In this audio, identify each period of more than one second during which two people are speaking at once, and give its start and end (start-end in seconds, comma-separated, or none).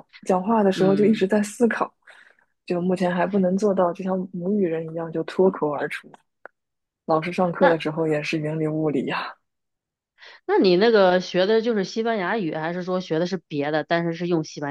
none